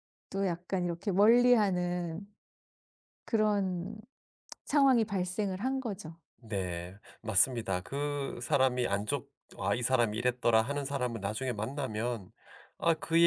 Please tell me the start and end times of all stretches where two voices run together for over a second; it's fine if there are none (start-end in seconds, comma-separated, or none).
none